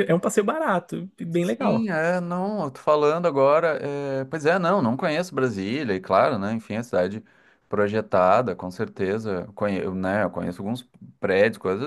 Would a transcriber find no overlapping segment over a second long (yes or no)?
yes